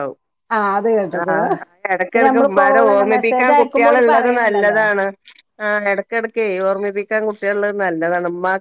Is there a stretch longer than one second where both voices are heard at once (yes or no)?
yes